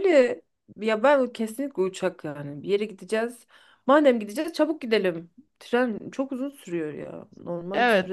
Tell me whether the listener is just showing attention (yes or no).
no